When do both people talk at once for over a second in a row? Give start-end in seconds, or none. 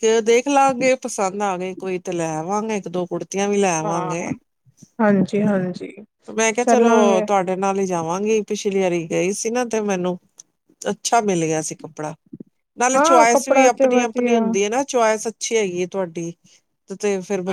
12.9-14.4